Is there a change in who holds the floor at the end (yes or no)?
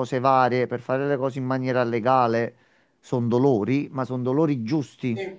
no